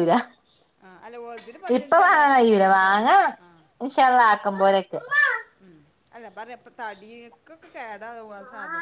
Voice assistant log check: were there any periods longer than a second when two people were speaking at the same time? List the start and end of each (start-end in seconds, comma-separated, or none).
none